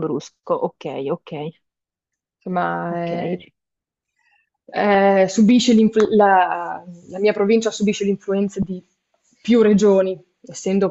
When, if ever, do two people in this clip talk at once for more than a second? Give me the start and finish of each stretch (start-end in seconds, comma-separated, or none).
none